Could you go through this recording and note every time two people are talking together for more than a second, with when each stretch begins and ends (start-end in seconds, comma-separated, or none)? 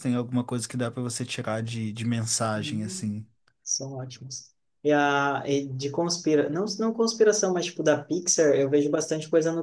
none